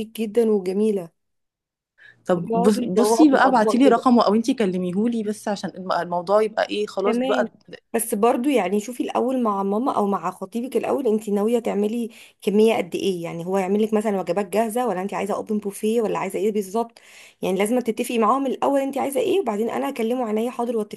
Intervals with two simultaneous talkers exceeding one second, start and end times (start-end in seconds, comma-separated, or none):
2.4-4.0